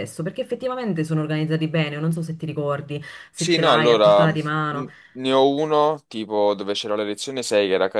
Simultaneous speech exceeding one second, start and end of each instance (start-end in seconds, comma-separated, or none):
3.4-4.9